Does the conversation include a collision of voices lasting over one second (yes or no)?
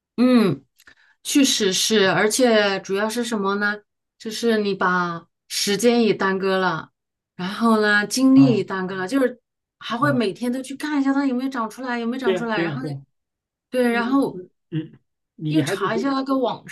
no